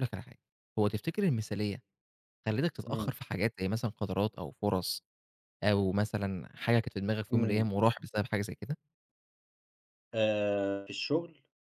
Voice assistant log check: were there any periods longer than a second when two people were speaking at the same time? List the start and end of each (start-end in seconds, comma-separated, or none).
none